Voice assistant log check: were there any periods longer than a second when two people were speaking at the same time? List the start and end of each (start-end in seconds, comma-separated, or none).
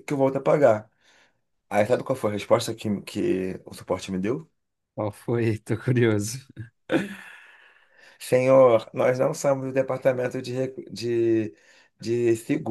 none